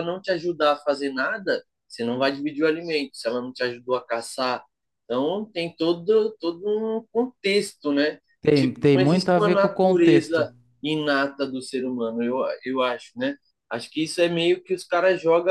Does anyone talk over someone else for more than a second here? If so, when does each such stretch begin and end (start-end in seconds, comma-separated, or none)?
8.4-10.5